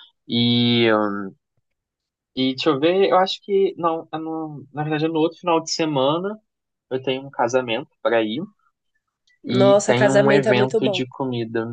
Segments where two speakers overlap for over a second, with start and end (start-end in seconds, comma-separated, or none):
9.4-11.1